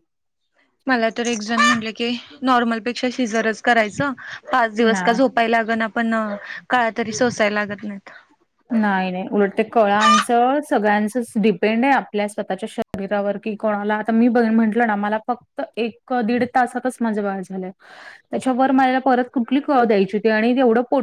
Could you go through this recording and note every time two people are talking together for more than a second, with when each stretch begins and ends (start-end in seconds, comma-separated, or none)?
none